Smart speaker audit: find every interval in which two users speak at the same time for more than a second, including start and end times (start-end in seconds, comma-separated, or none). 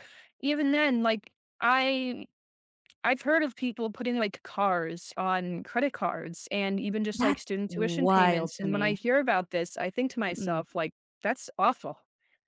7.2-9.0